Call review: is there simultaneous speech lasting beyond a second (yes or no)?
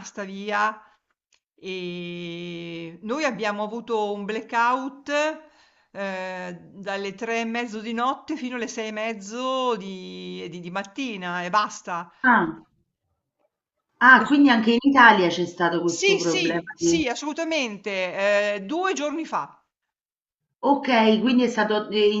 yes